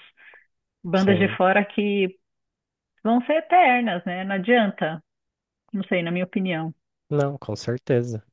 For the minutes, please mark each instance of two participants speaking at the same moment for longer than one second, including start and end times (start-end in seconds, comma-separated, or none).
none